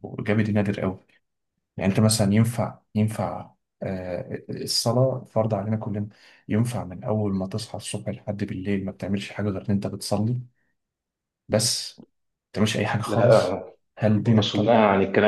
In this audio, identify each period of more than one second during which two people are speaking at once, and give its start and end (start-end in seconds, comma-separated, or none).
none